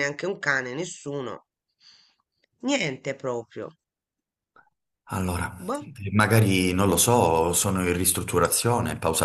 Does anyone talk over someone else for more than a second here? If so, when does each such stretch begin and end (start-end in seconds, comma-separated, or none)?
none